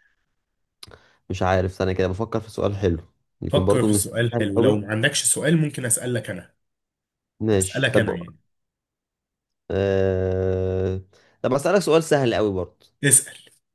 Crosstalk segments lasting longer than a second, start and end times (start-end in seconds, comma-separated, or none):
3.5-4.9